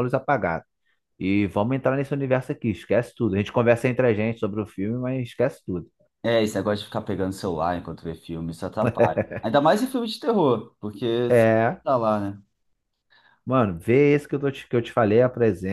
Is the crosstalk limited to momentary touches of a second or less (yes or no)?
yes